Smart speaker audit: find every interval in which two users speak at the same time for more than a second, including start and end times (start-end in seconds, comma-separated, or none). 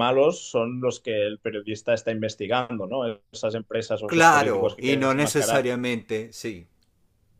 4.0-5.7